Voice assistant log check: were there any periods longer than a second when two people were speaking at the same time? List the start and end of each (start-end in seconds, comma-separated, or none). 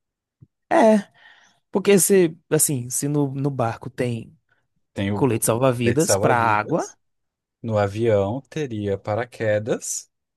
5.1-6.9